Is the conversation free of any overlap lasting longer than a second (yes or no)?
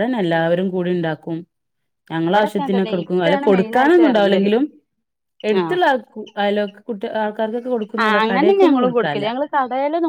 no